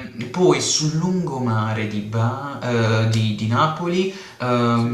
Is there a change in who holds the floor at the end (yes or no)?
no